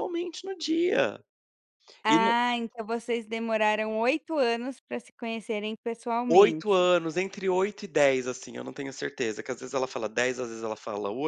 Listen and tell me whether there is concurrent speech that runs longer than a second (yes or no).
no